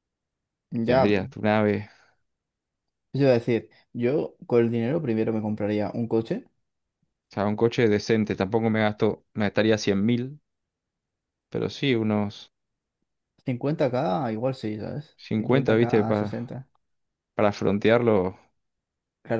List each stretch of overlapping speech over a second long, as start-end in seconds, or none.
15.2-16.6